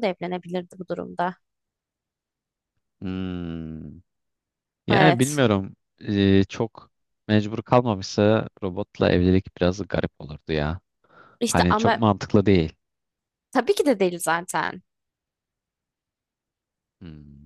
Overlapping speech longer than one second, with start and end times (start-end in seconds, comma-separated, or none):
none